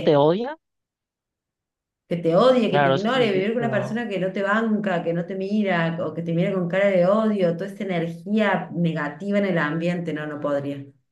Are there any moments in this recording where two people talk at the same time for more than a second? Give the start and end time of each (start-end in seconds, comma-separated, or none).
2.7-4.0